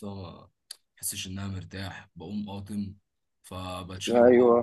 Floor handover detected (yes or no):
no